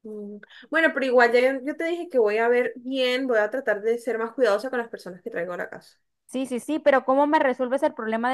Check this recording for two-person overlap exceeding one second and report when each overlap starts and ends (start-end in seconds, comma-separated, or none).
none